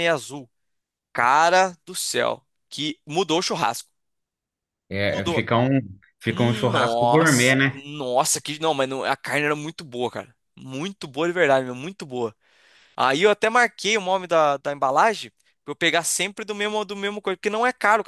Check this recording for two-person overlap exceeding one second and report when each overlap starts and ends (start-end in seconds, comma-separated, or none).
6.3-7.8